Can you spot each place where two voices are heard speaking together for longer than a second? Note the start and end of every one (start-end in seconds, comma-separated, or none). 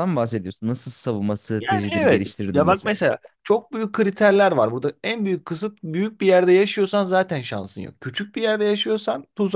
1.6-3.0